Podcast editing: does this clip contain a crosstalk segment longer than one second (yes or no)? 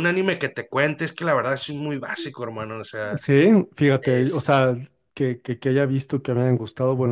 no